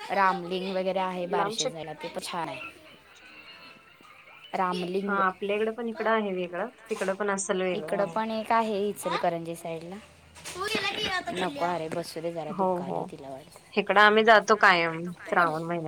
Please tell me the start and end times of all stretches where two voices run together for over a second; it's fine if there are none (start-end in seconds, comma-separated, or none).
none